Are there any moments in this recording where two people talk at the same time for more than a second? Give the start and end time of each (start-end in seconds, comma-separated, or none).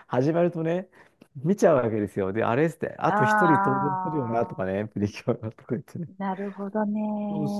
3.1-4.6